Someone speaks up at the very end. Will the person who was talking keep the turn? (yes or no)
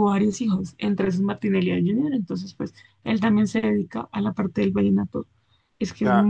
no